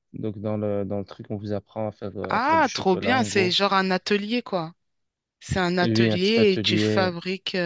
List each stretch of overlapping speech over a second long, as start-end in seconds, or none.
2.3-3.5, 5.8-7.1